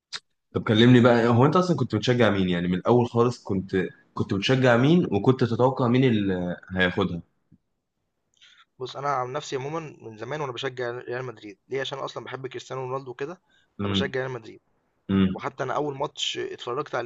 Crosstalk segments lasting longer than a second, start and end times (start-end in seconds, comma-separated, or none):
none